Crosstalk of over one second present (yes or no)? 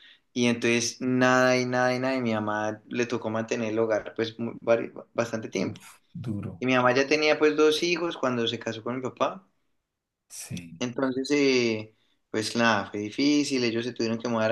no